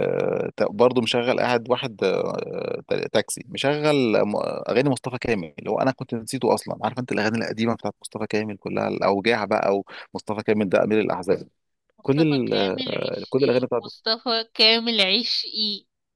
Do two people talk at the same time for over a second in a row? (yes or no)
yes